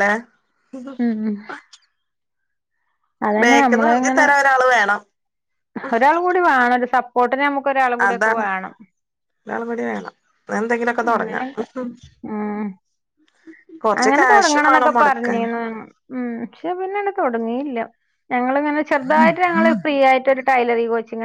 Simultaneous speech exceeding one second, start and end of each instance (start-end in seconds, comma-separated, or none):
14.2-15.5